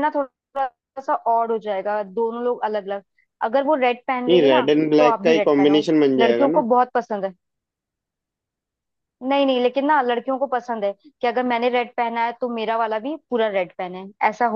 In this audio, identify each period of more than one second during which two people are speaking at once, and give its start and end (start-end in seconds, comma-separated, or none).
4.3-6.6